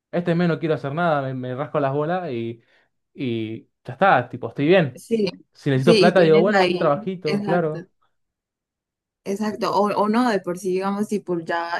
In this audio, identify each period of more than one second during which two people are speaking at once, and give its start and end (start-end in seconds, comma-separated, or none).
5.8-7.8